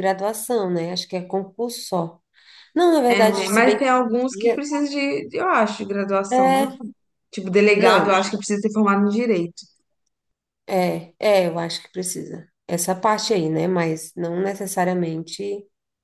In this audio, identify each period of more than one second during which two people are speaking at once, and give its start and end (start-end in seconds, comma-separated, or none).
3.1-4.7